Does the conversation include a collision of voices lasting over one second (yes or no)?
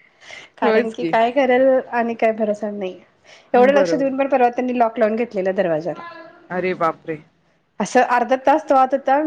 no